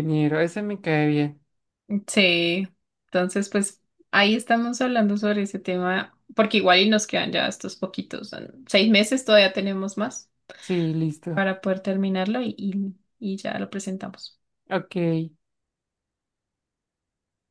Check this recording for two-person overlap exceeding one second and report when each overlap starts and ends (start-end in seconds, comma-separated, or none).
none